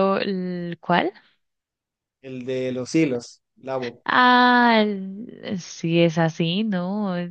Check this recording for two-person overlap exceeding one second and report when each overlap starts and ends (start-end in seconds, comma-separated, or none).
none